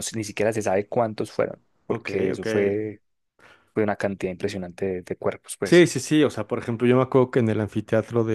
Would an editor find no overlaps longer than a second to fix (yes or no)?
yes